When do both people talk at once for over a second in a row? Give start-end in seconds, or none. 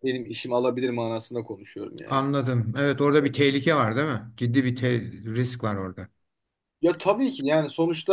none